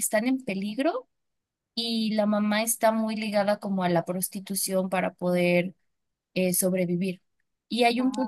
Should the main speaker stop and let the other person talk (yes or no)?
no